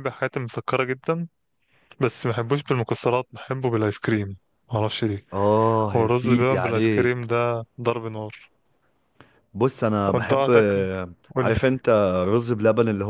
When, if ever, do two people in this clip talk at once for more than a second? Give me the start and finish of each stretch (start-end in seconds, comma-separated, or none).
5.9-7.3